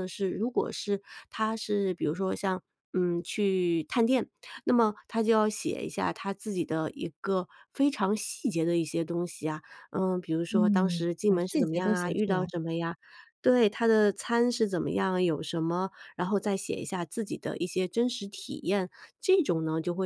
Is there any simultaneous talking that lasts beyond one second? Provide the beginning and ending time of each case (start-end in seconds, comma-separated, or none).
10.5-12.5